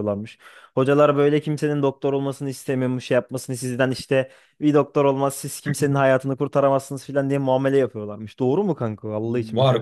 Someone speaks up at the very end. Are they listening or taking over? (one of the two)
taking over